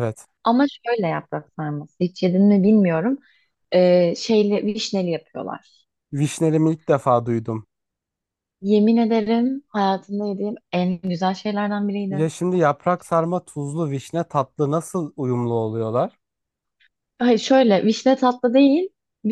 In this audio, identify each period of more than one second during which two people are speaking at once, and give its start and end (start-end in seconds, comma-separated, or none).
none